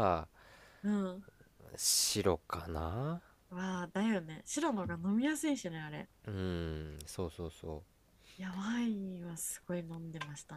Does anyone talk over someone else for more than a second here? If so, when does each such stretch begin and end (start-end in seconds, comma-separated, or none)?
none